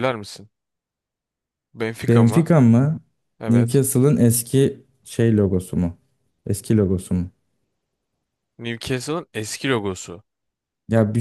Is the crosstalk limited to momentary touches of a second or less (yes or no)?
yes